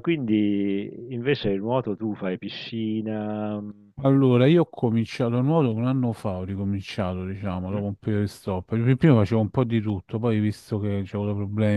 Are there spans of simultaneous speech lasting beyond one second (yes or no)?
no